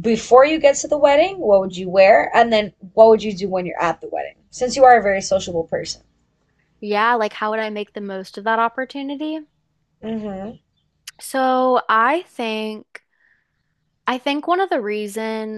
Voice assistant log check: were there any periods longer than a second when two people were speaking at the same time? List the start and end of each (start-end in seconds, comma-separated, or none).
none